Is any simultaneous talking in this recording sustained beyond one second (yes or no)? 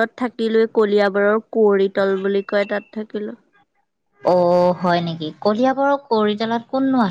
no